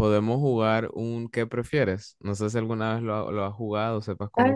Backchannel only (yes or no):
no